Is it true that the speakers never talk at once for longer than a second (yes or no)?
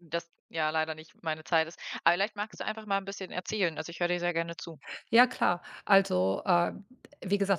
yes